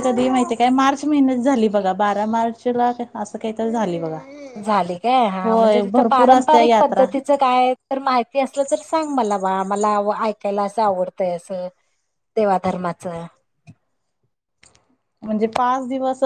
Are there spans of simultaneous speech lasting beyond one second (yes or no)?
yes